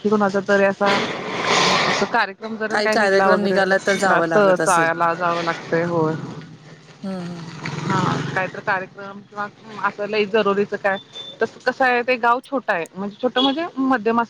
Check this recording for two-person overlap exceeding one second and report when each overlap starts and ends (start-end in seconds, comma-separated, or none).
2.7-4.9